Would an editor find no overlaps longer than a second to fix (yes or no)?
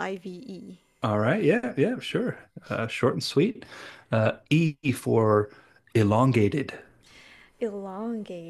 yes